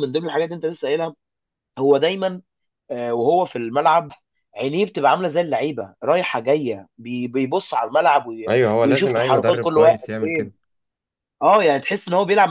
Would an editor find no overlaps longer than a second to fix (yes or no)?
no